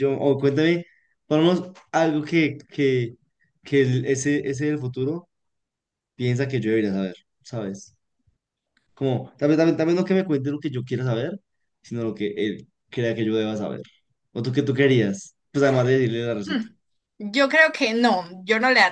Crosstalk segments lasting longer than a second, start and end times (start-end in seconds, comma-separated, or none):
none